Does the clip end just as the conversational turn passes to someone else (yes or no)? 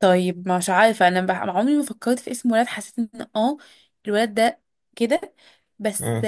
no